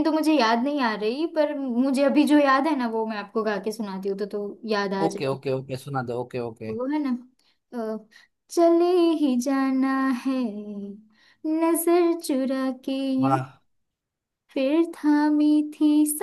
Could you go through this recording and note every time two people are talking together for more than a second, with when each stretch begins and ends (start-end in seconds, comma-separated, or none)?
none